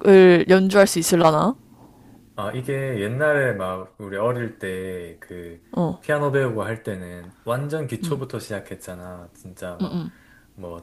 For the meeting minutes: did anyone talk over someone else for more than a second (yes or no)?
no